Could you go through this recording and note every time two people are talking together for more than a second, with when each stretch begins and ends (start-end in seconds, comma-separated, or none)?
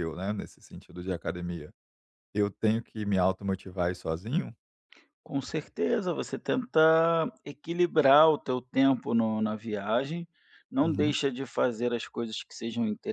none